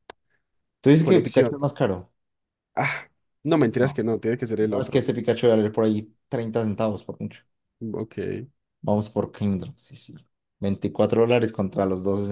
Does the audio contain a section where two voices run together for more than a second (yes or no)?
no